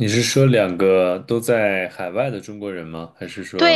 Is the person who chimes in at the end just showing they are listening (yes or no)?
no